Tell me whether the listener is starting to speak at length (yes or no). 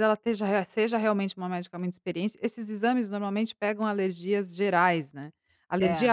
no